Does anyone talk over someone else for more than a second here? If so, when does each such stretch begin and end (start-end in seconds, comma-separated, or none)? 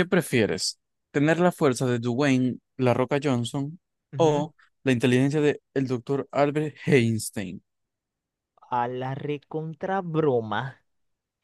none